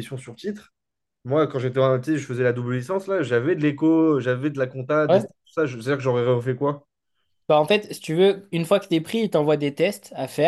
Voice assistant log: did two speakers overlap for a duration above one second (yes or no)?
no